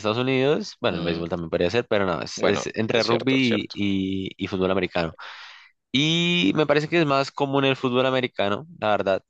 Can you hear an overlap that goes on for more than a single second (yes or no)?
yes